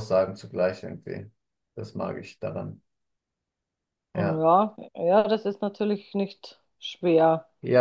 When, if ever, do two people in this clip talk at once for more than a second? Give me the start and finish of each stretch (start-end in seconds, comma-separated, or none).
none